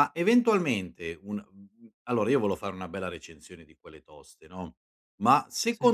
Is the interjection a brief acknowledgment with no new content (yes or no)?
yes